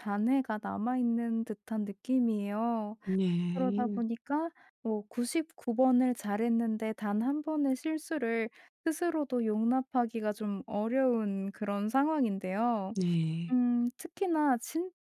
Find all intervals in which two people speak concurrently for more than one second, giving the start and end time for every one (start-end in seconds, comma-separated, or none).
none